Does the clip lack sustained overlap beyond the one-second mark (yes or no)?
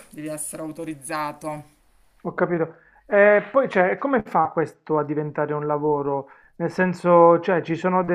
yes